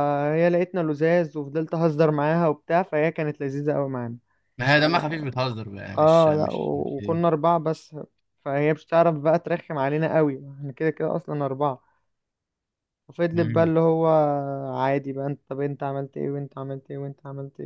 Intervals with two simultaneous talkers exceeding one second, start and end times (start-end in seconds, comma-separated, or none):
6.0-7.2